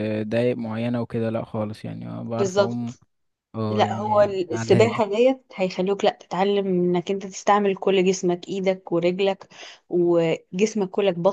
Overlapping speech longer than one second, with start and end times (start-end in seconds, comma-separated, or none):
3.7-5.0